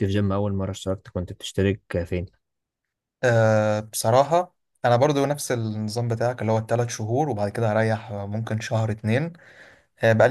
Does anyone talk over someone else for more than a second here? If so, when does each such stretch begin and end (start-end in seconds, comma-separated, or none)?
none